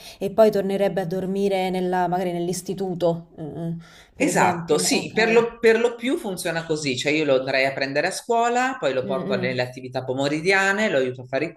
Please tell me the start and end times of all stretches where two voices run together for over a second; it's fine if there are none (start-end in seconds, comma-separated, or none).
4.2-5.4